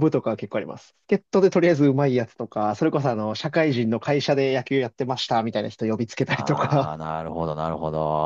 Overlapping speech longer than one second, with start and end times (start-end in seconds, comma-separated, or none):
none